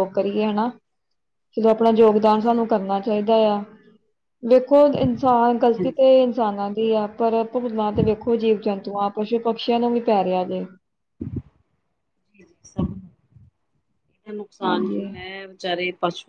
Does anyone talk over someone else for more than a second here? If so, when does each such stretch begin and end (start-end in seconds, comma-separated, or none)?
none